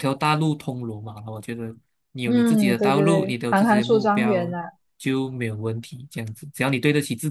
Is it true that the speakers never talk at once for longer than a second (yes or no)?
no